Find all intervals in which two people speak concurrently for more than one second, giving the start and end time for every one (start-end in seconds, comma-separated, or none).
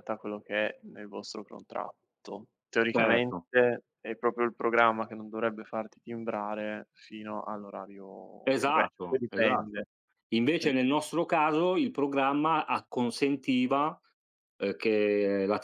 8.4-9.8